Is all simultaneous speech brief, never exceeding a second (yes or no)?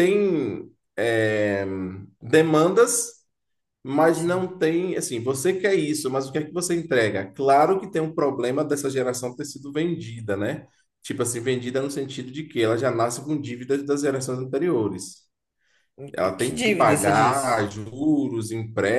no